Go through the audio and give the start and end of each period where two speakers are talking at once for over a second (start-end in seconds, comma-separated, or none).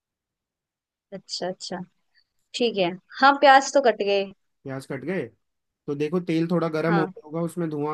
none